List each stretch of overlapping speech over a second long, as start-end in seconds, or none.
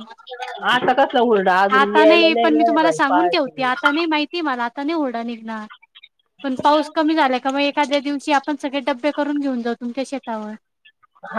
1.8-3.7